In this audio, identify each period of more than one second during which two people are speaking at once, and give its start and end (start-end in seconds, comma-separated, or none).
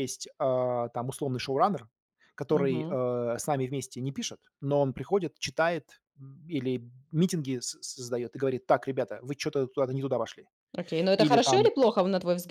none